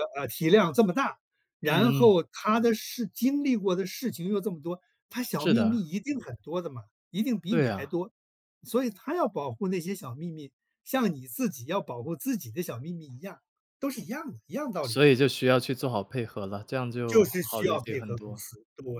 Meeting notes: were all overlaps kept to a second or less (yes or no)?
no